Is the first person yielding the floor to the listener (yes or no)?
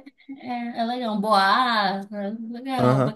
yes